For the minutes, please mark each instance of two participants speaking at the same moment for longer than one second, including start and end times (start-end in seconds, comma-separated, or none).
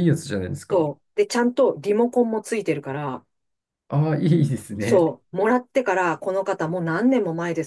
none